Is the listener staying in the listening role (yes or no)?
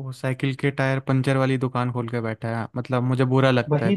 no